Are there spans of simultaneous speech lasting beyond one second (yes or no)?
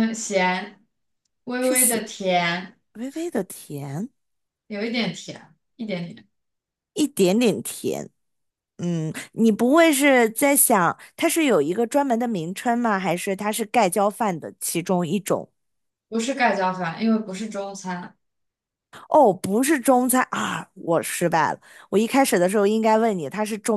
no